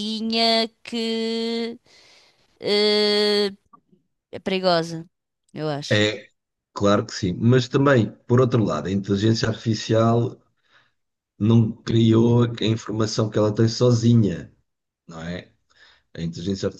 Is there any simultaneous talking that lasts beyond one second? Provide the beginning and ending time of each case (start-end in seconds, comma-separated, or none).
none